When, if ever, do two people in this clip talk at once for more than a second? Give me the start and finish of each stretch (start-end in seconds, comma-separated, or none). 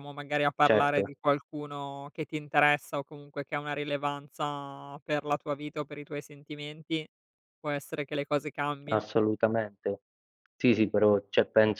none